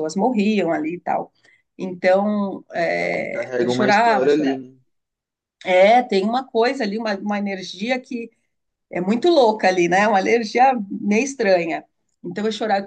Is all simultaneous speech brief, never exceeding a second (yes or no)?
no